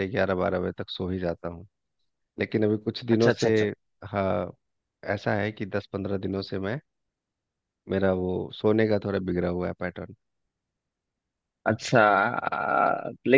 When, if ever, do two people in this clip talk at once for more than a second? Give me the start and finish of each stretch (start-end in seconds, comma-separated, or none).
none